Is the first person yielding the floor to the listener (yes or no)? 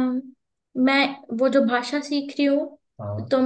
no